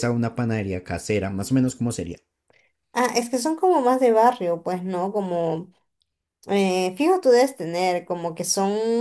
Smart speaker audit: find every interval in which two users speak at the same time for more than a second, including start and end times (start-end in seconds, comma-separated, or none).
none